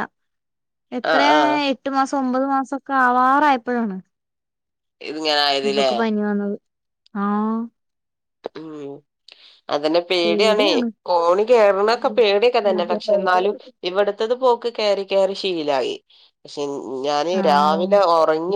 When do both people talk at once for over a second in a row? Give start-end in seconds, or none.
none